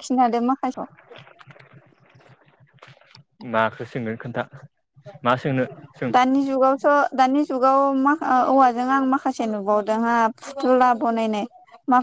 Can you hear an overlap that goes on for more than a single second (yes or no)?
no